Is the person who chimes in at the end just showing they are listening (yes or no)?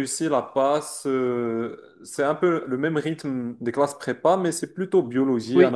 no